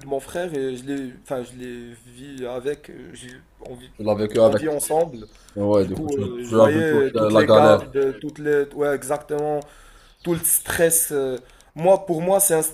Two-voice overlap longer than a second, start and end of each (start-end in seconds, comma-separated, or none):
5.8-7.8